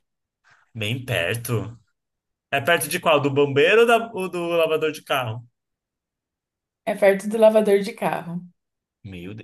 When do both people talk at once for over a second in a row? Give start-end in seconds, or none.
none